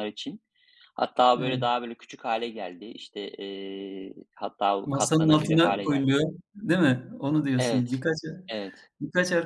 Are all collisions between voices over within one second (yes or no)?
no